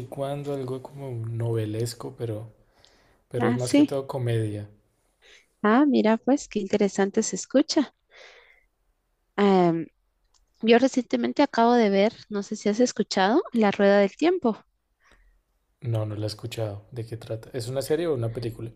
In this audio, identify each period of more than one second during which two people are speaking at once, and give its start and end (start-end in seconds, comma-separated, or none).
none